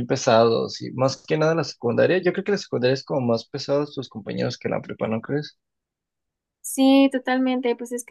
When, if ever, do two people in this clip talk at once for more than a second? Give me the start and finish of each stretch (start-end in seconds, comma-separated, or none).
none